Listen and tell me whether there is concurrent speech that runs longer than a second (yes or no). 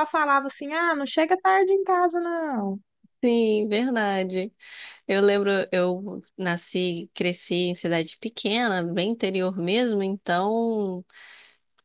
no